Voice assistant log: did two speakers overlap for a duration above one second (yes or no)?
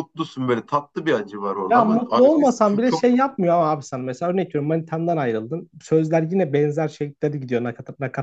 yes